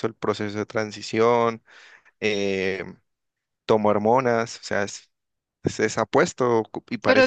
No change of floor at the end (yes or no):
yes